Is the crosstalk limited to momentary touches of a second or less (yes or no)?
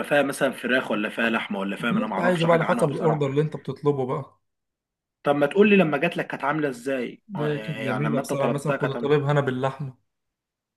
no